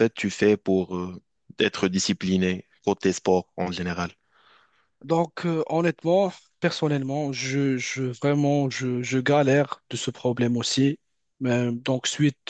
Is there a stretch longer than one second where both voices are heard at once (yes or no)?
no